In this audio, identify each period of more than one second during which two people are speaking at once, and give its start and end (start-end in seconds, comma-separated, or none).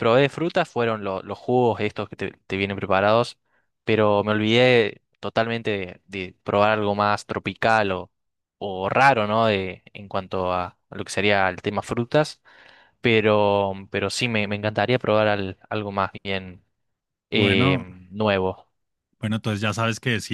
none